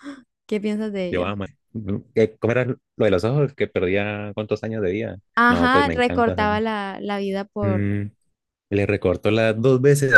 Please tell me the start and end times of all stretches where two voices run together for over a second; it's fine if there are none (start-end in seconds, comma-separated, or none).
5.4-6.6